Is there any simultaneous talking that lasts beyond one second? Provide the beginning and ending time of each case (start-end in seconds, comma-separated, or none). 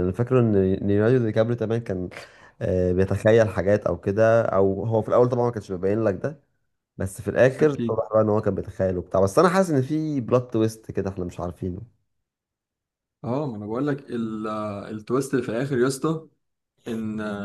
none